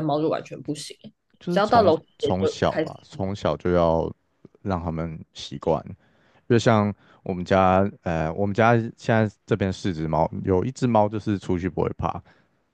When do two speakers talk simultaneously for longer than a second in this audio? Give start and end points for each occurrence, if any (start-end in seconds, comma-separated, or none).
1.5-2.9